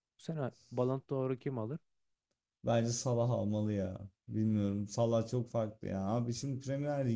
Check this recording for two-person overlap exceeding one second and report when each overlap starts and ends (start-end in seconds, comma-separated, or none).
none